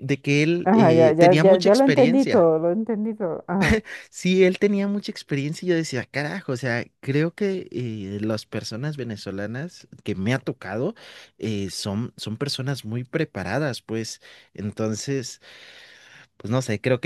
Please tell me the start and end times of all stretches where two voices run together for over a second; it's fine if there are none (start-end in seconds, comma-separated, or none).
0.6-2.5